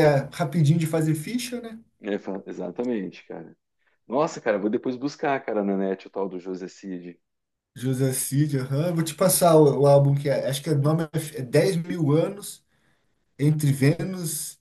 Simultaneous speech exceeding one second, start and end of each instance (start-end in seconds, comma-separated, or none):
none